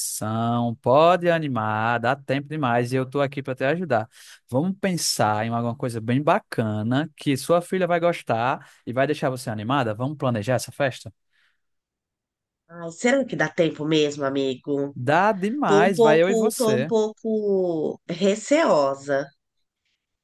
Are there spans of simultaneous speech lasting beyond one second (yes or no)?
yes